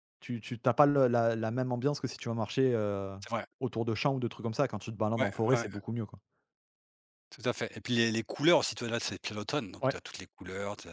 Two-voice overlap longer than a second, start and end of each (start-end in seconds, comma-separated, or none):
none